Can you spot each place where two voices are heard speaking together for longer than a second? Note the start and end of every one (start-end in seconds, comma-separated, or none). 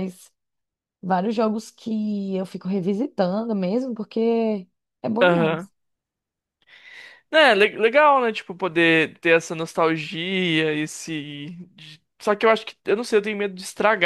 none